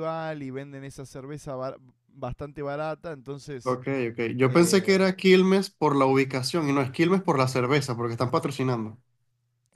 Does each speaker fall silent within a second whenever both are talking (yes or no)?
yes